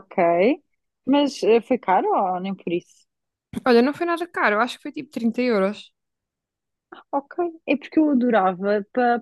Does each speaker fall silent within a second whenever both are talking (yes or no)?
yes